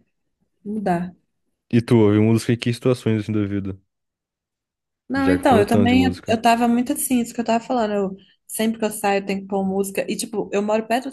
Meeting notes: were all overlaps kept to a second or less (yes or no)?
no